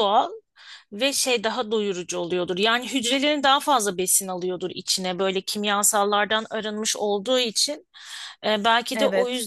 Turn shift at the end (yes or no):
no